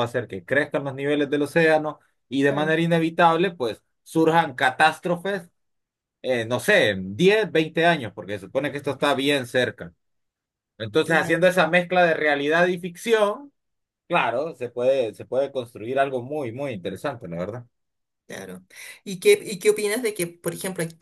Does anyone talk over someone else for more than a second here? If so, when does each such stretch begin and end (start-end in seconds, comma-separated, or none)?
none